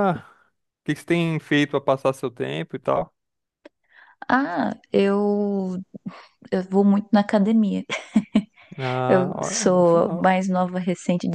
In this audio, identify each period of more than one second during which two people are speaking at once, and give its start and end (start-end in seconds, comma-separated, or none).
9.1-10.3